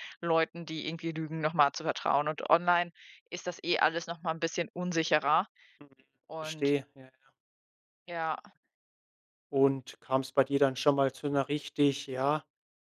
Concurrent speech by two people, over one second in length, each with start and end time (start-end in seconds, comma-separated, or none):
none